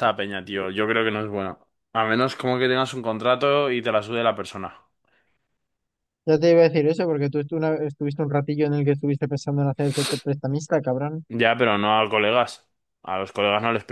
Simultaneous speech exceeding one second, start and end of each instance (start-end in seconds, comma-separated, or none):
none